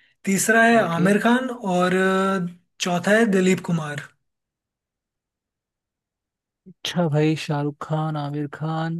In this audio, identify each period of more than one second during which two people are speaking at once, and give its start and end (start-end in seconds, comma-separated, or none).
none